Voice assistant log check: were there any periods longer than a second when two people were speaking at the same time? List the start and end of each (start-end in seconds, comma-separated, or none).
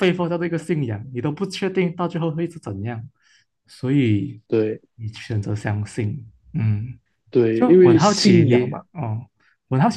7.5-8.8